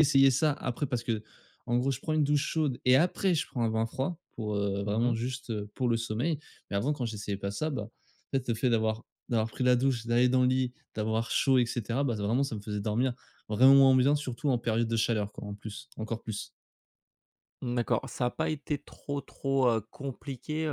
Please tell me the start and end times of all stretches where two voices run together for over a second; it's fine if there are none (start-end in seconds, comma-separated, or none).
none